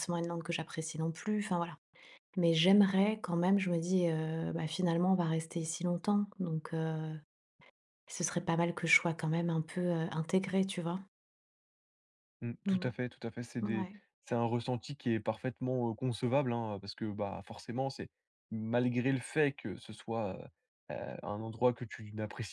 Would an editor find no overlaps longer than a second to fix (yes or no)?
yes